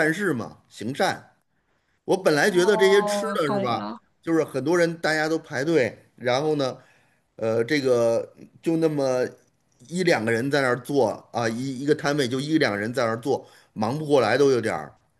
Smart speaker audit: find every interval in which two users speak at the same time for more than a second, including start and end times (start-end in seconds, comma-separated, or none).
2.5-4.0